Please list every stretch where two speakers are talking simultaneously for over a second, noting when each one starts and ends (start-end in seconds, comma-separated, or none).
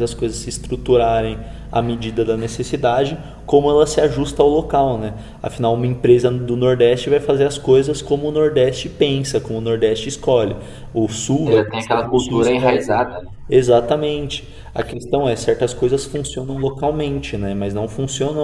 11.4-12.8